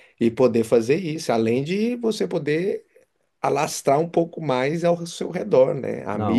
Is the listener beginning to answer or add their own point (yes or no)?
no